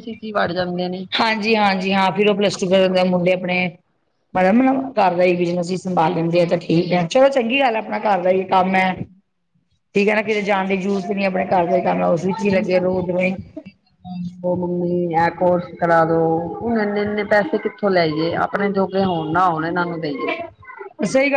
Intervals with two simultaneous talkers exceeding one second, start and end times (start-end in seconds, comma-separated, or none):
none